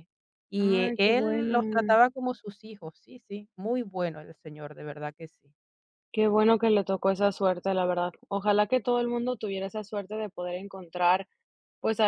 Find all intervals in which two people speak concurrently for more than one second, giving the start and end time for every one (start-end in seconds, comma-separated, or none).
0.6-2.0